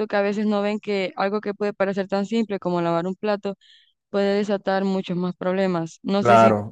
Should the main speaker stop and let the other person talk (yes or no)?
yes